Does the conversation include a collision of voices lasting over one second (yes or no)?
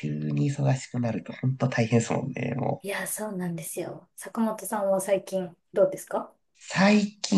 no